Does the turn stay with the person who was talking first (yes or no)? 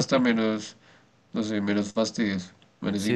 no